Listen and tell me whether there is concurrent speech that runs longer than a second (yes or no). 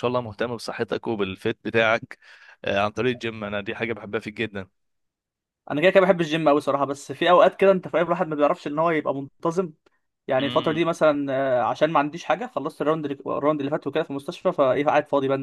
no